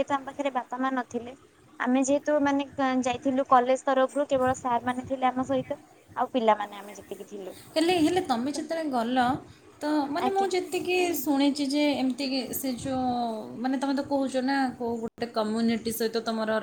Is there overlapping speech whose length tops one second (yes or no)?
no